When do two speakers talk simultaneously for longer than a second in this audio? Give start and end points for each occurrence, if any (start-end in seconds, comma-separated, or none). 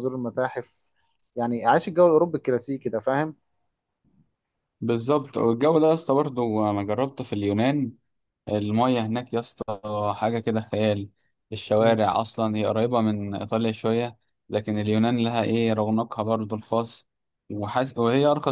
none